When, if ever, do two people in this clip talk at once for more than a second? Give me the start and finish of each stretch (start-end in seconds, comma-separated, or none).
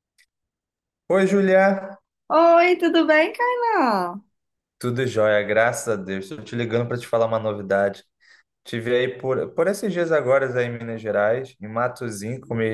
none